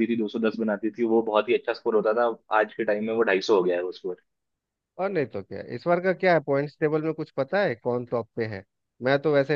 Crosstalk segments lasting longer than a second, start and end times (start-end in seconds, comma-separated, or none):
none